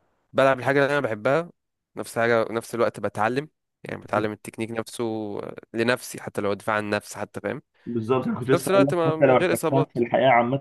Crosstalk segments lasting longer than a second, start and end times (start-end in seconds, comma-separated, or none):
8.4-10.0